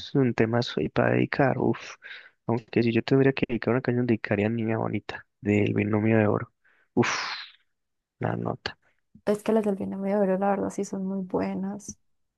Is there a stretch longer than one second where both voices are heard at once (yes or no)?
no